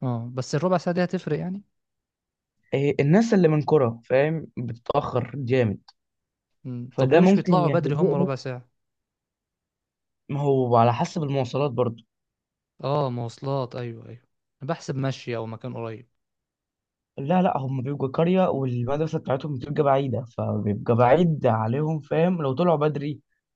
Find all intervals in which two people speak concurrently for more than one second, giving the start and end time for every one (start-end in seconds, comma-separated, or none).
6.9-8.3